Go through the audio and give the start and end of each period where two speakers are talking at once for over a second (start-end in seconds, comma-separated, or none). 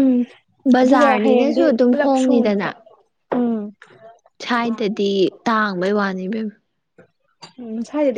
0.8-2.7